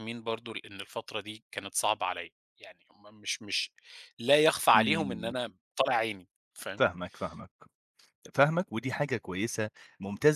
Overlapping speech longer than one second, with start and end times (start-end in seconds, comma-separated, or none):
none